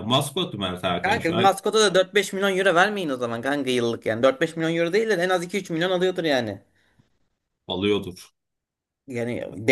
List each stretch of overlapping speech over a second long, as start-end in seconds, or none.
none